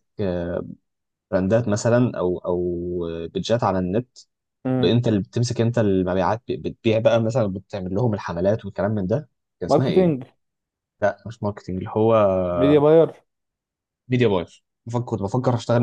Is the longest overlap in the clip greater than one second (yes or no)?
no